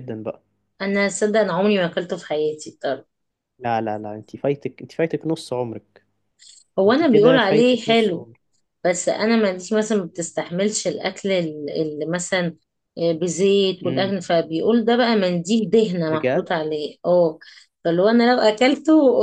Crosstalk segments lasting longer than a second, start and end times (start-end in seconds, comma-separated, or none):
6.9-8.3